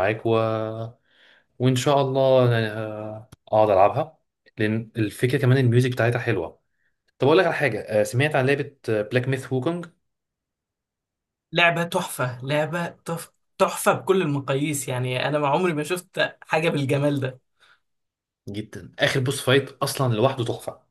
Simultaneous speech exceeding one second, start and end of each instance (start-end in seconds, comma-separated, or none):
none